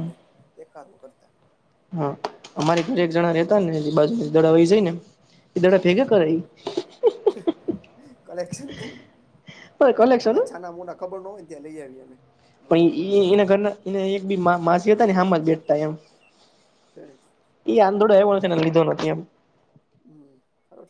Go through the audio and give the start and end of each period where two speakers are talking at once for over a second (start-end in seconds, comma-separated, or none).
none